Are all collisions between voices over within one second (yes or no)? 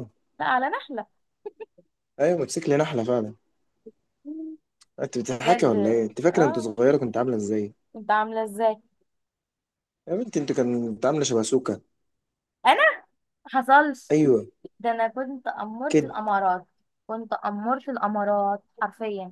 no